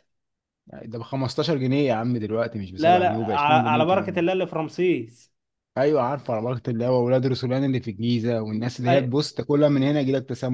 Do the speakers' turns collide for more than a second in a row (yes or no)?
yes